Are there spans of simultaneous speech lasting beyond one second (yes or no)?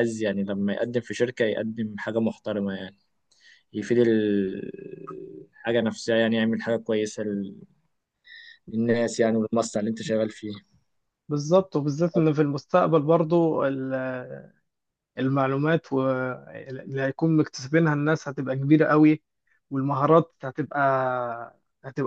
no